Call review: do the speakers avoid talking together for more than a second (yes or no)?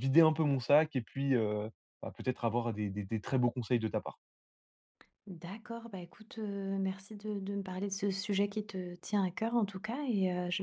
yes